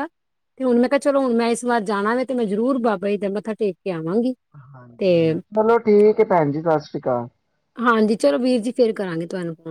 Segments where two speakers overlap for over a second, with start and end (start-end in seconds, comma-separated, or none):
none